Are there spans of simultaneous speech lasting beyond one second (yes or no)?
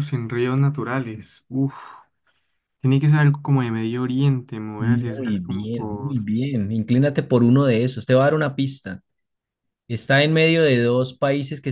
yes